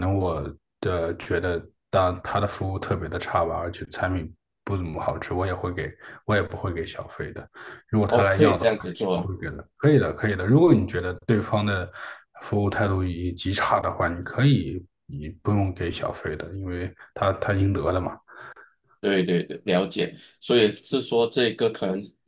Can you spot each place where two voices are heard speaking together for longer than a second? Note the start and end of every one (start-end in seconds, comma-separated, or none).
8.1-9.3